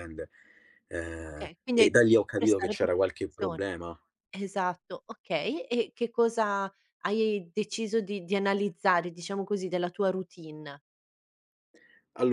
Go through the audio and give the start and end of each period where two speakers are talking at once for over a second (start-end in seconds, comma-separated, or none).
1.3-3.7